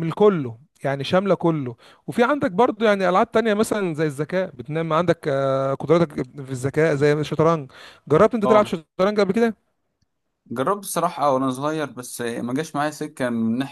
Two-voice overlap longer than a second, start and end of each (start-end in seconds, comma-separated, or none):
none